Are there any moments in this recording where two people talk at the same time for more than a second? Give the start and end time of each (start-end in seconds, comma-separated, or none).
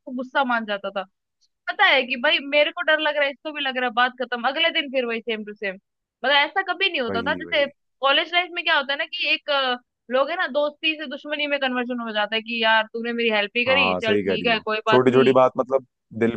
13.7-15.3